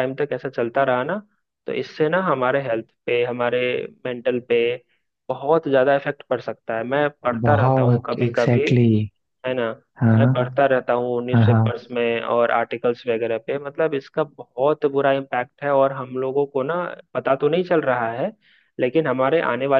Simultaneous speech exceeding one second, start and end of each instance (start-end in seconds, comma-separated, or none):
7.4-8.7